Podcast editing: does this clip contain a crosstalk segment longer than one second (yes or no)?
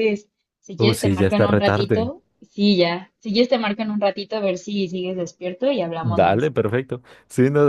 yes